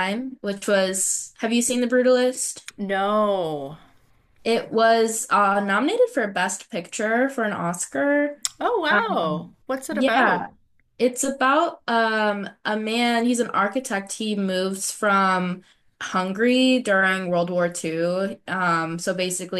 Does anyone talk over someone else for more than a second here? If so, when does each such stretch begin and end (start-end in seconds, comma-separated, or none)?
8.9-10.4